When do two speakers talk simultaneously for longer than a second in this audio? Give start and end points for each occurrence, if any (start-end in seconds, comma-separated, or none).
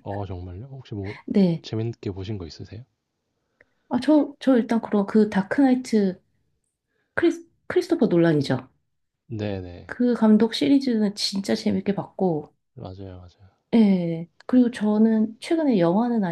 none